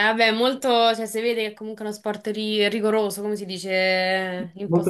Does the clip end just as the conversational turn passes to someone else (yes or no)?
yes